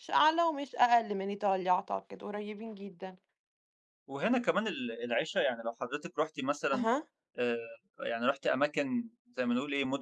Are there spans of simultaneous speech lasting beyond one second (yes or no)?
no